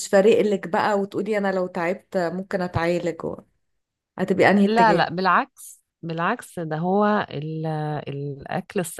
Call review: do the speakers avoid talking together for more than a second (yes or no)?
yes